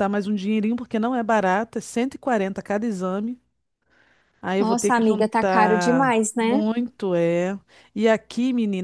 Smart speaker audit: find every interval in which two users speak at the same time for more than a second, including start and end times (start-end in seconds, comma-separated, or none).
4.6-6.6